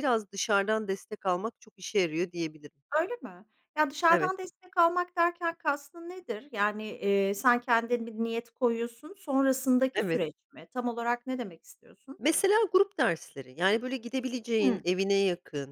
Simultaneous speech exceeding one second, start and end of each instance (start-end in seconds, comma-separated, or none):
none